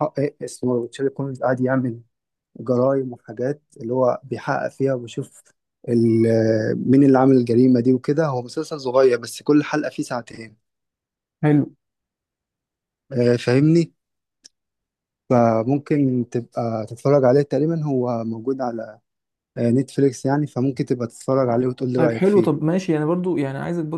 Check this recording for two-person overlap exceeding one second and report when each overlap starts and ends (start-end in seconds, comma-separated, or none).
none